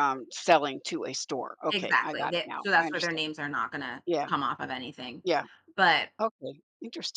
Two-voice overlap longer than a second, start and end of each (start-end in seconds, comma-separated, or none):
1.7-3.2